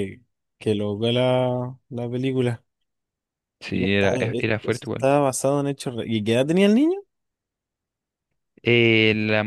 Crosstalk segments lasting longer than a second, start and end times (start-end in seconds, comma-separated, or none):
3.7-5.1